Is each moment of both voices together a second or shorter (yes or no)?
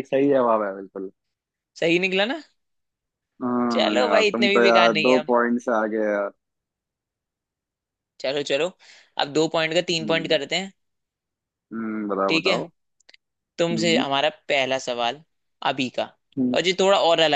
no